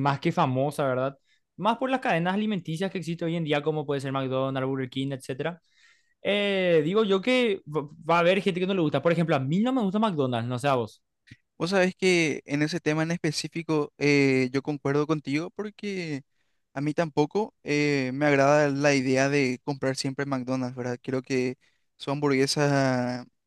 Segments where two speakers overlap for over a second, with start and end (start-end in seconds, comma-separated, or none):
none